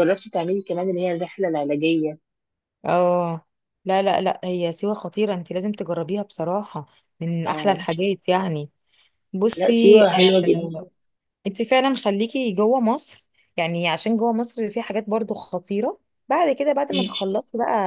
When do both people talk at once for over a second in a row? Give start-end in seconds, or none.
9.5-10.8